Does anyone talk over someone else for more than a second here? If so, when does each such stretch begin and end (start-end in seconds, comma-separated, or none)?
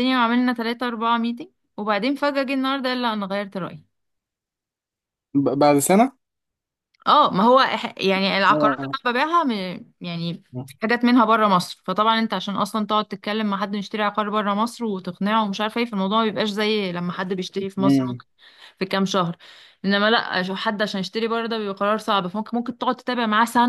none